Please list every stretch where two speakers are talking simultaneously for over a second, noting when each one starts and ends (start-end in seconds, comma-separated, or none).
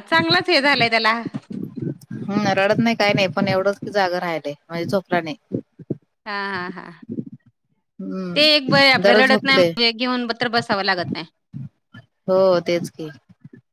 8.3-9.7